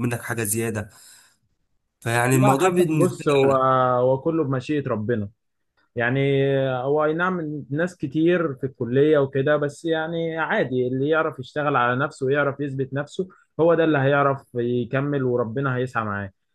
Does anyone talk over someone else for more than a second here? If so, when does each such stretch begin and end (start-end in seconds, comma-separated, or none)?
2.3-3.5